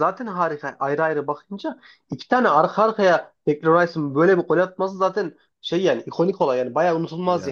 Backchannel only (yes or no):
no